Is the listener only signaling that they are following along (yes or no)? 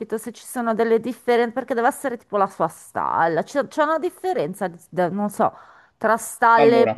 yes